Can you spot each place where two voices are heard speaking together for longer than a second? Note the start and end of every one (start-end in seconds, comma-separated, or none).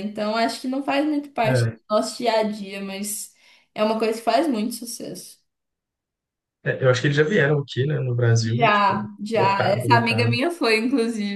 8.4-10.4